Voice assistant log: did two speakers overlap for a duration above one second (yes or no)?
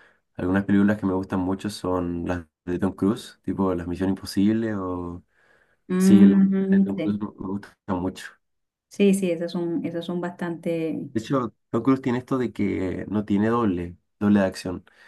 yes